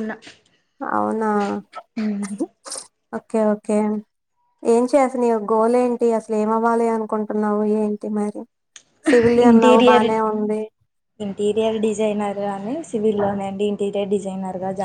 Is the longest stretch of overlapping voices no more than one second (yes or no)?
yes